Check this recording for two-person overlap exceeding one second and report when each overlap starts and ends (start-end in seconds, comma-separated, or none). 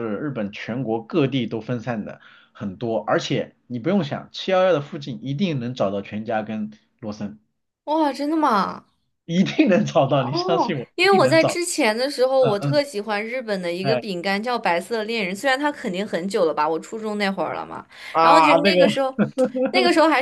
10.2-11.6